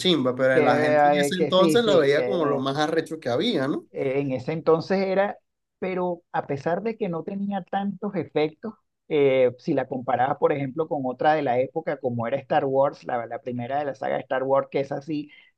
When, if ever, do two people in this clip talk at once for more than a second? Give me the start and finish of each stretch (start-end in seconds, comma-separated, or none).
1.3-2.6